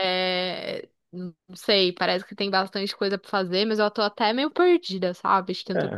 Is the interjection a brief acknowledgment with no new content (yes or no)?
yes